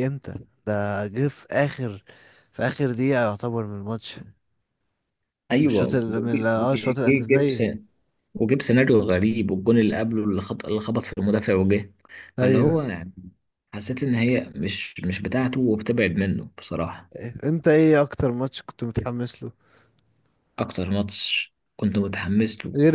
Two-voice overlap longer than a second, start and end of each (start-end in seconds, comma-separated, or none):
5.6-7.6